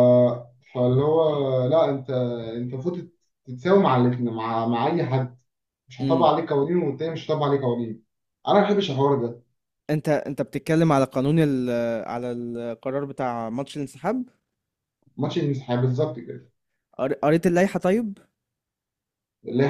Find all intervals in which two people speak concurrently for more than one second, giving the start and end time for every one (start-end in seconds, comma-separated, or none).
none